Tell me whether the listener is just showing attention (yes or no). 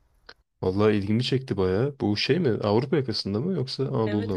no